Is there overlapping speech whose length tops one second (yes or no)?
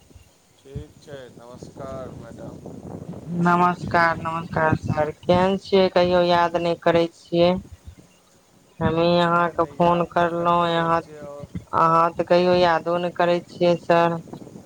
yes